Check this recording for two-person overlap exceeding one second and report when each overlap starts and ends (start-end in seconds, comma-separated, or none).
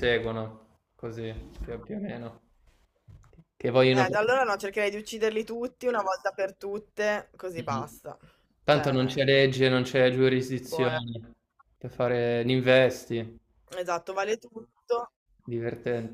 none